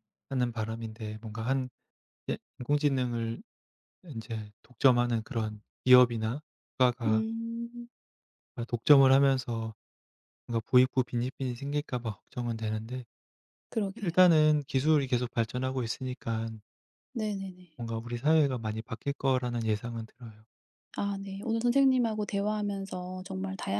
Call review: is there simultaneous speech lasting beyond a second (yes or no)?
no